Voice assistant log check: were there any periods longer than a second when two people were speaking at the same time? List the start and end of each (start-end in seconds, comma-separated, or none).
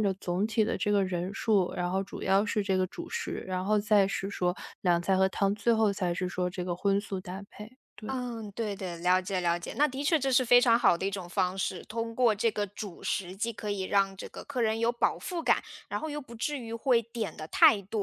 none